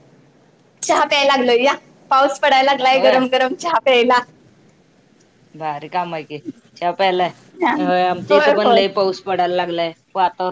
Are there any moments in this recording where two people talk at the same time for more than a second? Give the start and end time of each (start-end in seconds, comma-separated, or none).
none